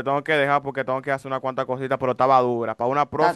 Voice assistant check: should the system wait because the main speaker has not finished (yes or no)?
no